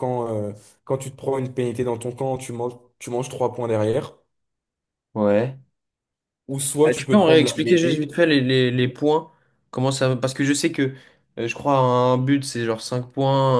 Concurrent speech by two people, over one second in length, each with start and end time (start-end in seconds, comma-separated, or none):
6.8-8.1